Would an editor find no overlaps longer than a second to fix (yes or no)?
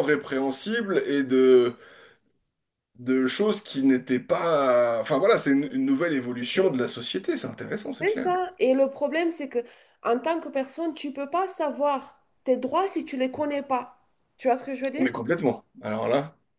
yes